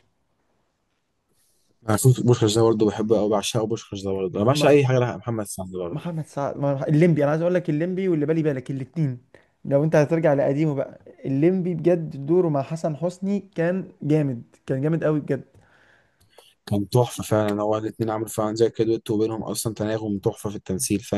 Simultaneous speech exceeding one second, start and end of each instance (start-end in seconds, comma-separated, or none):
none